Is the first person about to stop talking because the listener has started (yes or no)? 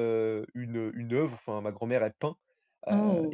no